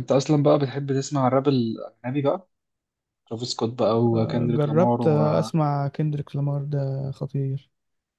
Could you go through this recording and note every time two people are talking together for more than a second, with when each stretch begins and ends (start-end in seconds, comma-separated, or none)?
4.1-5.5